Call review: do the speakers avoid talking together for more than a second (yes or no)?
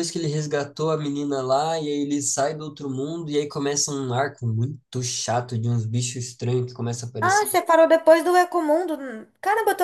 yes